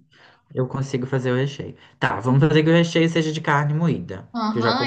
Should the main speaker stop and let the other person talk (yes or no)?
yes